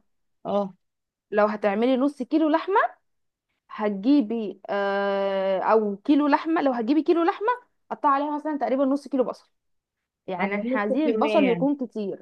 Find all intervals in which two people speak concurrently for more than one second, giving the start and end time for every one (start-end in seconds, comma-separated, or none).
10.4-11.7